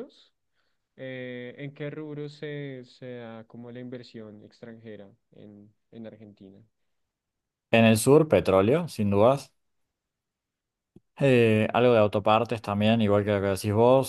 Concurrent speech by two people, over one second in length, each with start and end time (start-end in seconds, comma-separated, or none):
none